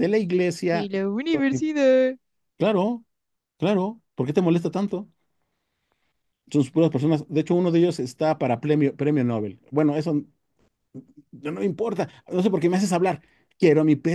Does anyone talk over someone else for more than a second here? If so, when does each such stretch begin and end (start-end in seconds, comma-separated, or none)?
none